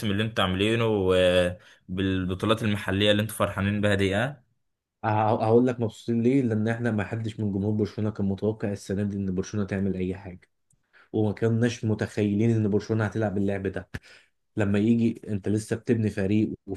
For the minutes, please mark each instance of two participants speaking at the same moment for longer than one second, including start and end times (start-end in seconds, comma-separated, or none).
none